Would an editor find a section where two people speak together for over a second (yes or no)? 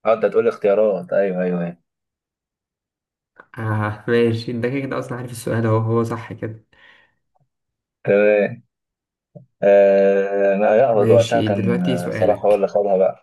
yes